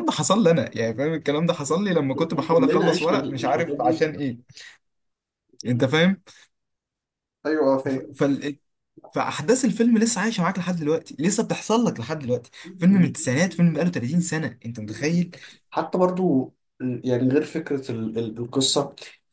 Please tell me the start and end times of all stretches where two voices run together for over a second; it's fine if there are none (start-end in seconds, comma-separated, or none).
2.5-4.1